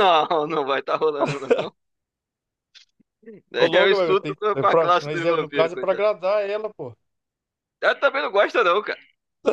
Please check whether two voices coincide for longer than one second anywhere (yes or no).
yes